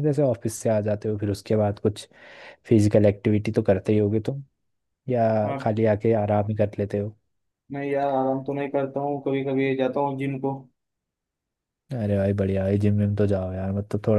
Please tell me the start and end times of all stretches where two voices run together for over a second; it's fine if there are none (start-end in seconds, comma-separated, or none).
none